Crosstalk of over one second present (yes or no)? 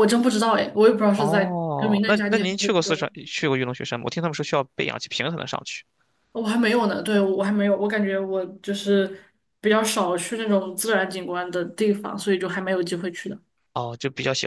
yes